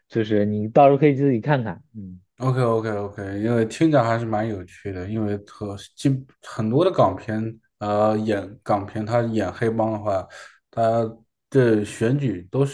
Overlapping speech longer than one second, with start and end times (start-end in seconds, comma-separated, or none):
none